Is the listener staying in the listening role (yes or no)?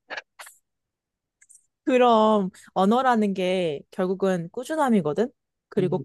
yes